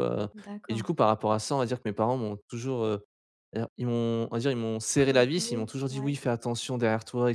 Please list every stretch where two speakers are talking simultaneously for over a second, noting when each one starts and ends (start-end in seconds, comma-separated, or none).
4.9-6.2